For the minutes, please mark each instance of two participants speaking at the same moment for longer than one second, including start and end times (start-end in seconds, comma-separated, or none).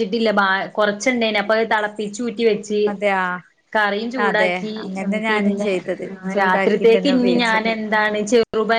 6.4-7.7